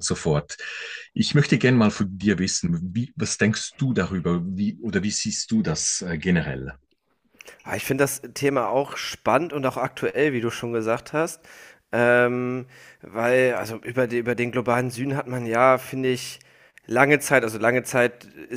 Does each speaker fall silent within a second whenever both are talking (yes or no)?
yes